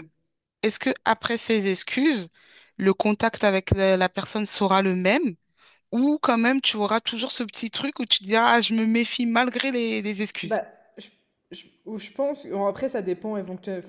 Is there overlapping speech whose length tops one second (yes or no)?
no